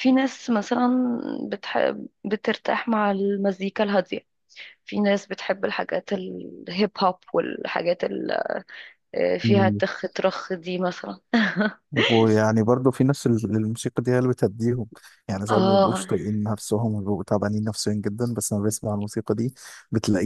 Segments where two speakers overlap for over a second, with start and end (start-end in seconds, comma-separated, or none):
none